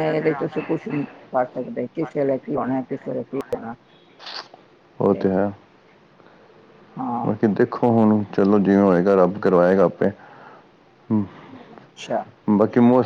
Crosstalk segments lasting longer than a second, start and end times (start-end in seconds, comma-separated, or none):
none